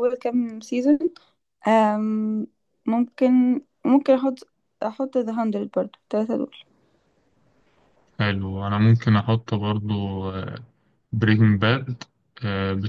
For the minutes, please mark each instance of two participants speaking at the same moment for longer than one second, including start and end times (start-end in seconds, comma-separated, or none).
none